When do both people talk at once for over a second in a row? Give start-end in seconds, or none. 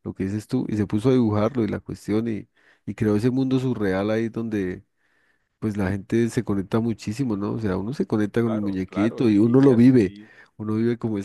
8.4-10.1